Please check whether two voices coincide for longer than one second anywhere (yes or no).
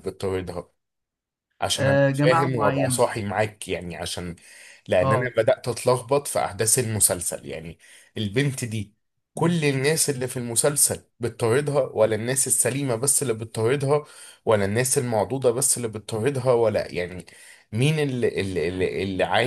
yes